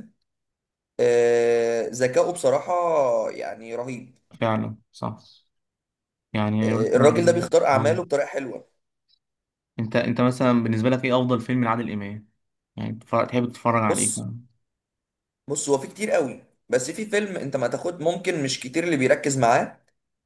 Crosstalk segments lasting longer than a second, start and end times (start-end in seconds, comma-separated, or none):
6.6-8.1